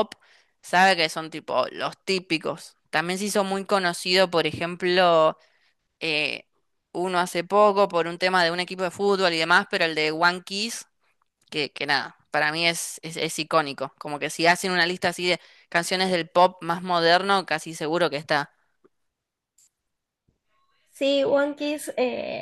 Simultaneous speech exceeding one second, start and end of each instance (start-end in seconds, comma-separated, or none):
none